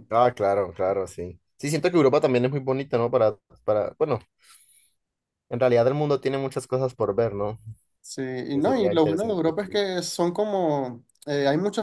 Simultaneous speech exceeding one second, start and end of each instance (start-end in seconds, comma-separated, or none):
8.5-9.8